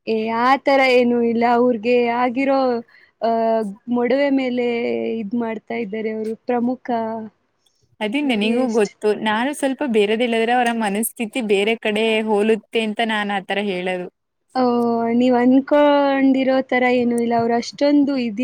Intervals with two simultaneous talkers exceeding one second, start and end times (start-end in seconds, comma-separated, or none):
none